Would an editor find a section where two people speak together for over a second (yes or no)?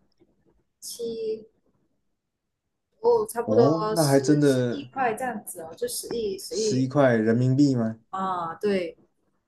yes